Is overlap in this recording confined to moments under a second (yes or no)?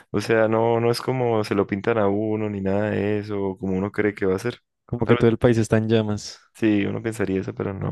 yes